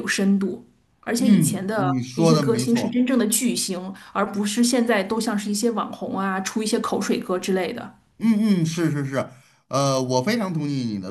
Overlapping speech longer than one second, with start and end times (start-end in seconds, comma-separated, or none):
1.2-3.0